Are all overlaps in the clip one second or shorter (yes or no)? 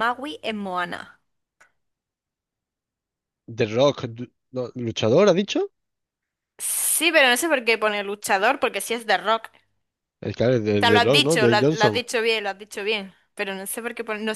no